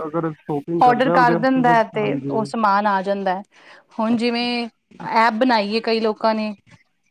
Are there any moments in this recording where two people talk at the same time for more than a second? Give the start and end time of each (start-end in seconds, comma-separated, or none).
0.8-2.5